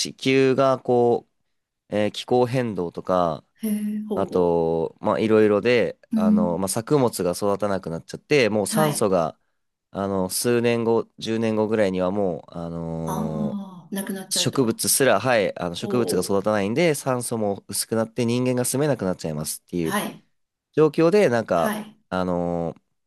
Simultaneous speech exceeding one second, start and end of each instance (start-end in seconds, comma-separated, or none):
none